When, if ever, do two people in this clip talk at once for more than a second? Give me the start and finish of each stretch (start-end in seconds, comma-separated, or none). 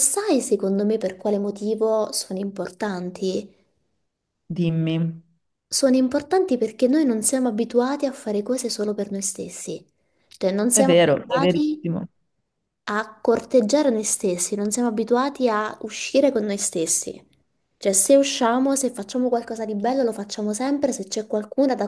10.7-12.0